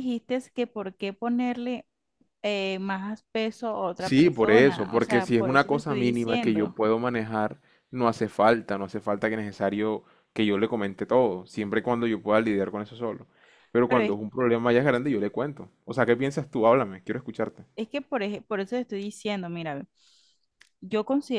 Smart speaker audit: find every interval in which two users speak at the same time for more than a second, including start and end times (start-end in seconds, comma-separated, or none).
4.0-6.8